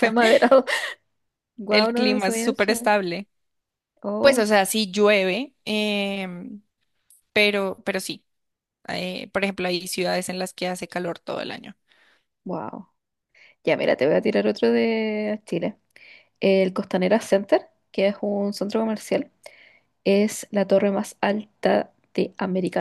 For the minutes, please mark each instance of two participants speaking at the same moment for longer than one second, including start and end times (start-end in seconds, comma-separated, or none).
1.7-2.9